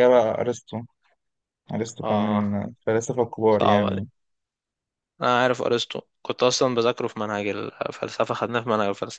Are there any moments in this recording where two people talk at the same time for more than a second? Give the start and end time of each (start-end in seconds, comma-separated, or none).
none